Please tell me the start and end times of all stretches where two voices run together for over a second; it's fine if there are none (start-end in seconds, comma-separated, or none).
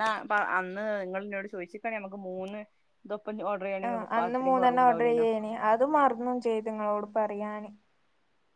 3.9-5.2